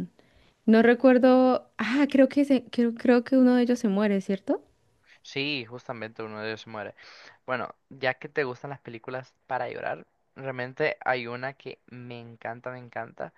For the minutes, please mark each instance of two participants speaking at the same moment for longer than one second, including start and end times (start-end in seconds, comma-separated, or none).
none